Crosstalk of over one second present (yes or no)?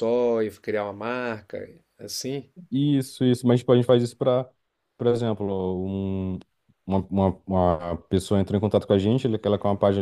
no